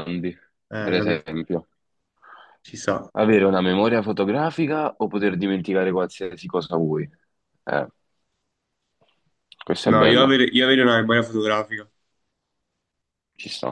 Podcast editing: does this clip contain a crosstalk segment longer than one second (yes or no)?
no